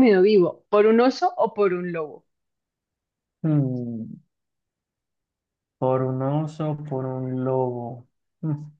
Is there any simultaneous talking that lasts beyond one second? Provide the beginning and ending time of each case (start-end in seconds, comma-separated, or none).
none